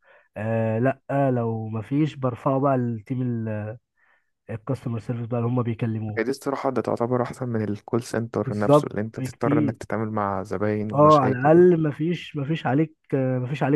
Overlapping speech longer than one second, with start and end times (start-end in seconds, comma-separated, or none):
8.4-9.8